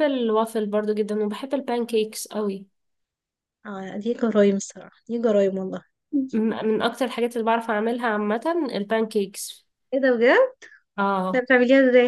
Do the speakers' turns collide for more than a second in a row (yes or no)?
no